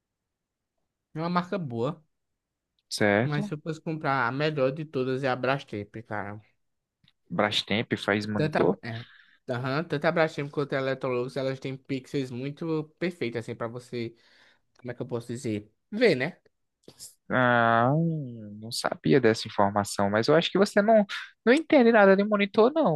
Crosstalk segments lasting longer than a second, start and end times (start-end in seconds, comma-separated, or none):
none